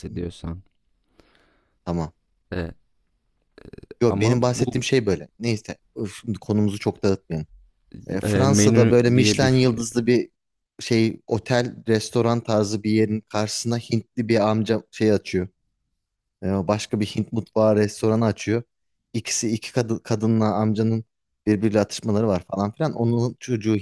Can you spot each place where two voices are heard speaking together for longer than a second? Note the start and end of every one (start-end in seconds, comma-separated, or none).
8.2-9.5